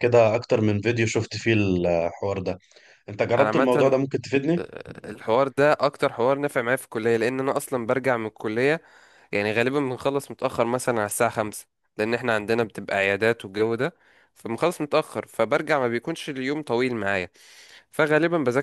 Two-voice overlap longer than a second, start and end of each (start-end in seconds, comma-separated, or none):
none